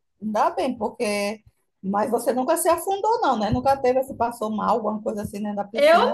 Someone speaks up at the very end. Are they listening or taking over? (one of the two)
taking over